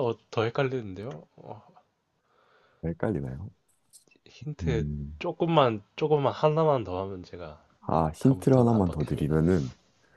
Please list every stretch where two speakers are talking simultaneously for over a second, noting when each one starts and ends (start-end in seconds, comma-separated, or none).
8.2-9.5